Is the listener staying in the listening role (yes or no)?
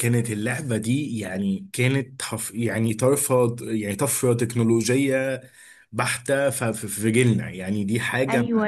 no